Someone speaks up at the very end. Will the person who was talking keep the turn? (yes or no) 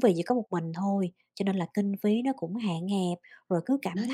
yes